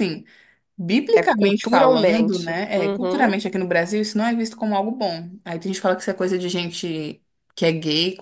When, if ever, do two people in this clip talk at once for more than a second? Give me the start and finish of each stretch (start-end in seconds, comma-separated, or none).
1.1-3.4